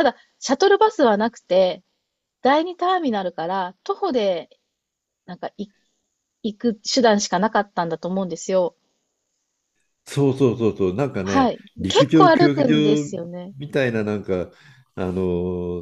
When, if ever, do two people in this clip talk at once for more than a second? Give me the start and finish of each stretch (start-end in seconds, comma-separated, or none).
11.2-13.1